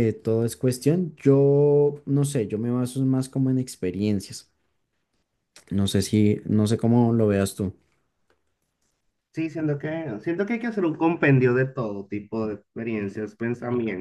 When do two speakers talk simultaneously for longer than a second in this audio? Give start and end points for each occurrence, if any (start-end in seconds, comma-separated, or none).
none